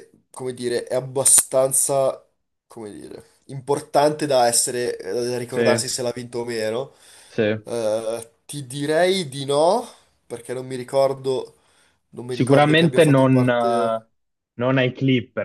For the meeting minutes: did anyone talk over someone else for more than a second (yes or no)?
yes